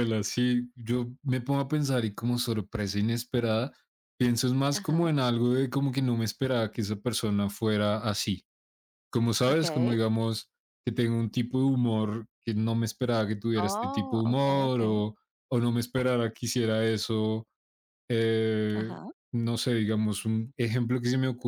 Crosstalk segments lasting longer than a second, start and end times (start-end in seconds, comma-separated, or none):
13.7-14.9